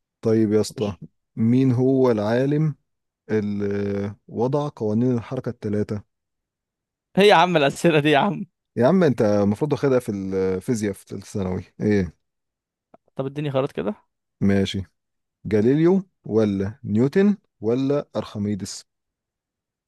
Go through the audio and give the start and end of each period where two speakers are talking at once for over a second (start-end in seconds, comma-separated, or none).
none